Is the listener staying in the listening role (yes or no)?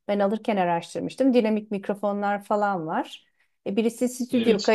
yes